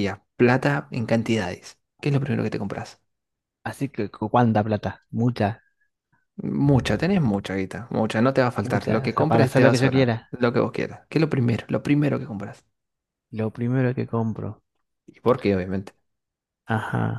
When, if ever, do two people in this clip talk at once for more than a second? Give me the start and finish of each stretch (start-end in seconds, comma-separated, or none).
8.6-10.3